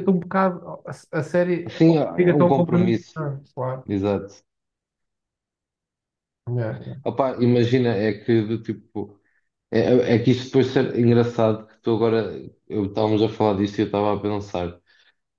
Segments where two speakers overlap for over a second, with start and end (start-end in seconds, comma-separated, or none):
1.7-3.1